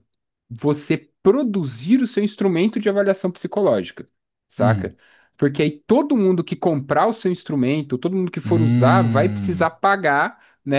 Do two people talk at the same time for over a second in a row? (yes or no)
yes